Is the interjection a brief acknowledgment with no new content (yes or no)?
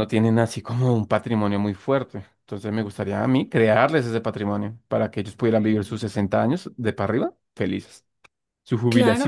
no